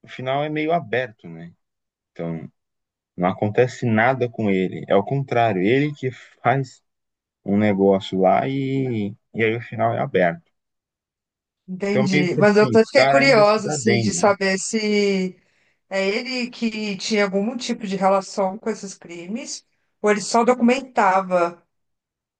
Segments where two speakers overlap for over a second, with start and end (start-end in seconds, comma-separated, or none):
11.9-14.3